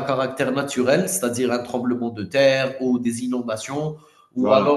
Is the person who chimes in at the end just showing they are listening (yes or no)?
yes